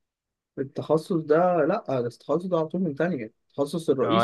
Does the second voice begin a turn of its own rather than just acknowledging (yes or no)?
yes